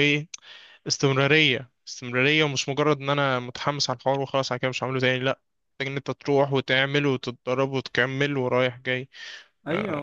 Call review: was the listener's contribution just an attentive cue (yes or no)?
no